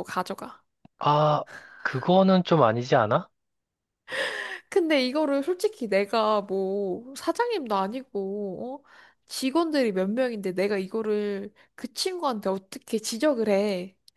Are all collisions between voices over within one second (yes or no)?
yes